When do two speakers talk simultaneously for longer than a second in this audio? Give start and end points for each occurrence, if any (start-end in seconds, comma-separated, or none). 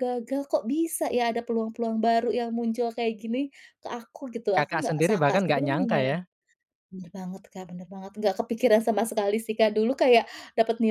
4.6-6.0